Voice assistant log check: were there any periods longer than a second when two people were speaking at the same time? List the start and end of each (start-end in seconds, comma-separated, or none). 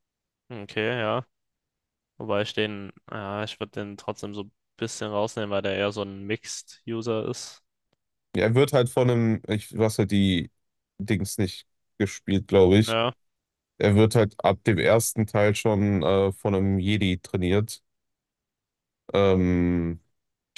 none